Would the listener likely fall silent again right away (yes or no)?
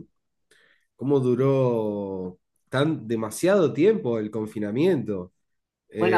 no